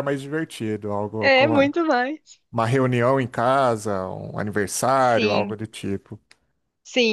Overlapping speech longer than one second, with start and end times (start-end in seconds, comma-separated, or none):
none